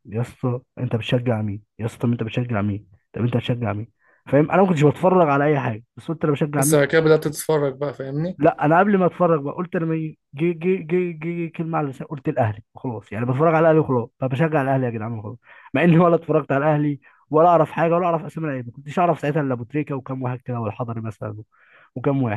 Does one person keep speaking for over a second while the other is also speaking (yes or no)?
no